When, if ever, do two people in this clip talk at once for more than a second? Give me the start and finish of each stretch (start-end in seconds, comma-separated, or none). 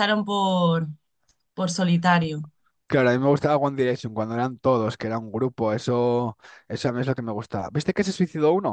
none